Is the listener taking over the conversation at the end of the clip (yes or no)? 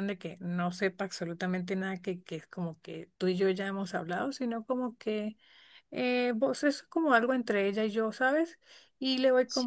no